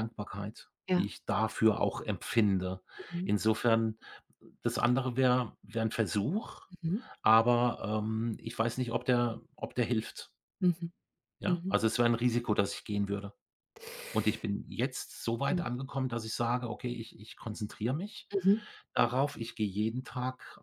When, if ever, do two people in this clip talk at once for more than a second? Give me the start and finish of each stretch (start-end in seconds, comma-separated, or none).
none